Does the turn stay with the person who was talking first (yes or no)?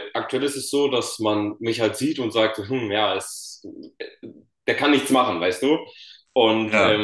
yes